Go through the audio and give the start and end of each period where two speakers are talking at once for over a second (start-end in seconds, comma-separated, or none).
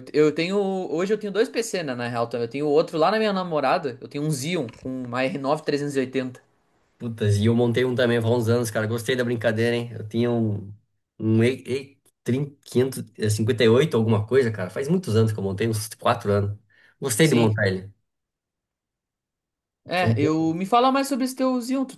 none